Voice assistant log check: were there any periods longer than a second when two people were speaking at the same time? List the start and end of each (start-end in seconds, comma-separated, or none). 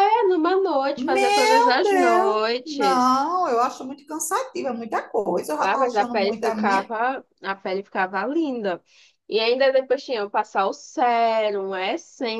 1.0-3.1, 5.6-6.9